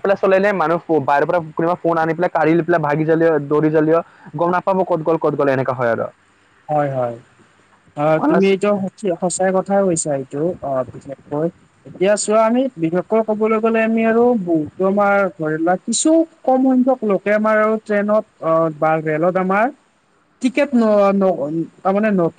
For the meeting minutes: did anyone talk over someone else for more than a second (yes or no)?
no